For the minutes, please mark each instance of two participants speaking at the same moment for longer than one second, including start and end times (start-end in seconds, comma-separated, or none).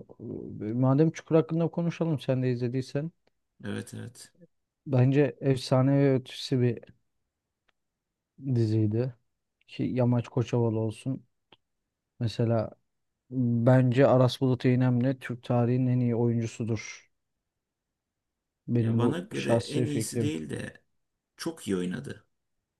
18.8-20.4